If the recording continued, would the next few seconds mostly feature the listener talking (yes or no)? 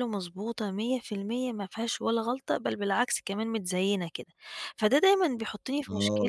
no